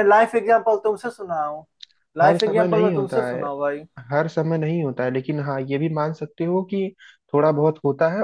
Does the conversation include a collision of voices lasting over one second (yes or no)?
yes